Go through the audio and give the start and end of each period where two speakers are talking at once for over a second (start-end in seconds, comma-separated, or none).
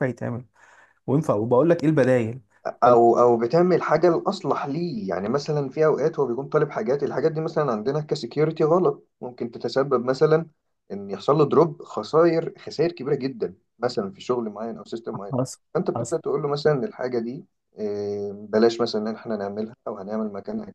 none